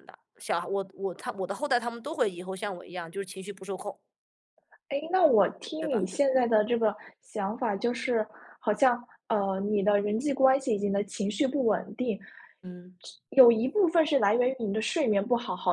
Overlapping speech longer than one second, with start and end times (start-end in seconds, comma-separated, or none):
none